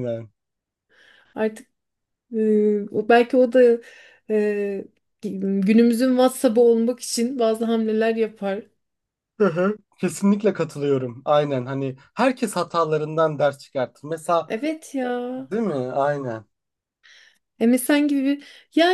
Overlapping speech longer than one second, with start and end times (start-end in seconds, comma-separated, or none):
none